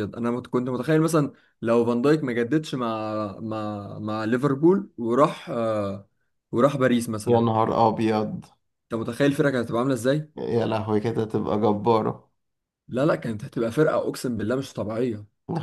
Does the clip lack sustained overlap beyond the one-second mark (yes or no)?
yes